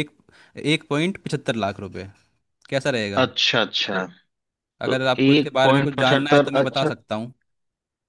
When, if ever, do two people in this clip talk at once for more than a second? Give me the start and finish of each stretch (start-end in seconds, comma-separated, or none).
4.8-6.9